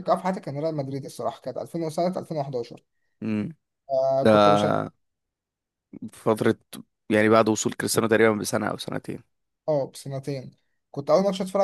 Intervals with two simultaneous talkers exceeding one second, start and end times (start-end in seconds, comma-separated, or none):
none